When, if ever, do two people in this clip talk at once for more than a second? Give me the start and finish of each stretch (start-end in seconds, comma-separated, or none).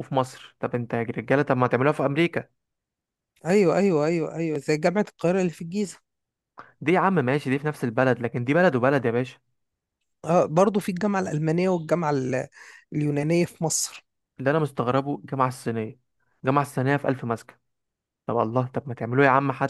none